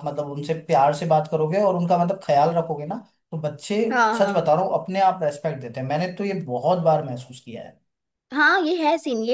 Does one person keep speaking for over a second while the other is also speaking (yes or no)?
no